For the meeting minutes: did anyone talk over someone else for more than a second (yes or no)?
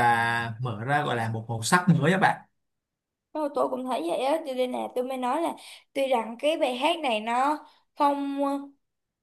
no